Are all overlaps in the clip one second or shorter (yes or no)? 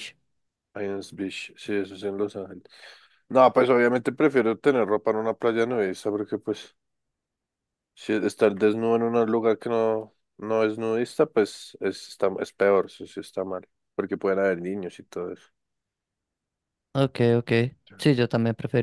yes